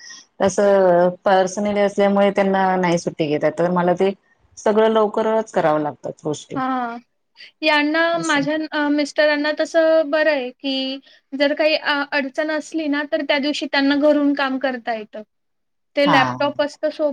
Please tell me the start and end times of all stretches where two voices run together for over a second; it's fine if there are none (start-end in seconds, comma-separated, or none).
none